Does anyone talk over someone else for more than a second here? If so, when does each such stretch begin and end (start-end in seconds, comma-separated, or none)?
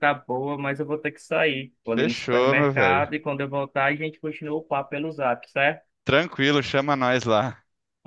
1.9-3.1